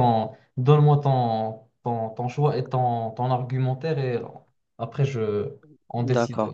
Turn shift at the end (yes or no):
yes